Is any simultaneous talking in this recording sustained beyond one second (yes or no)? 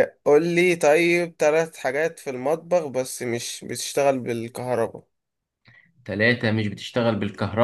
no